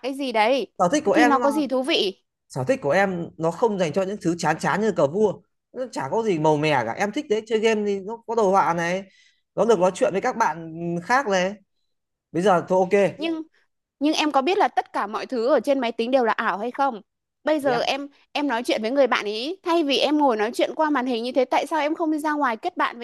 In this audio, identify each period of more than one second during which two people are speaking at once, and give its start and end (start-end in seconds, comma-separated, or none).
none